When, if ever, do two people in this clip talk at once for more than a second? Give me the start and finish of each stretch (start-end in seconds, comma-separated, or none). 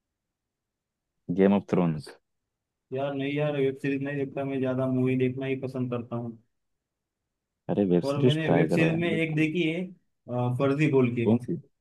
8.1-9.5